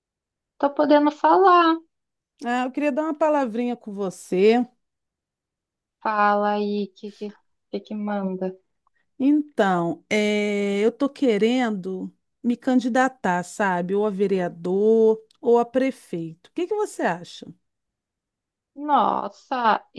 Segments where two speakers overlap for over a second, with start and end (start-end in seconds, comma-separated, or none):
none